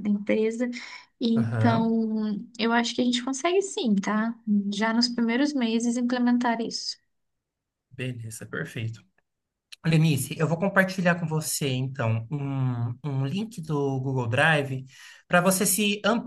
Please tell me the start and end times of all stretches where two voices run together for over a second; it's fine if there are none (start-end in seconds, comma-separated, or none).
none